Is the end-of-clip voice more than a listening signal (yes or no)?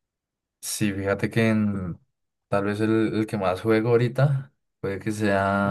no